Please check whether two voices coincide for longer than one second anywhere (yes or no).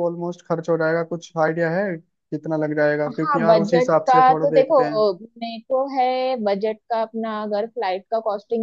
yes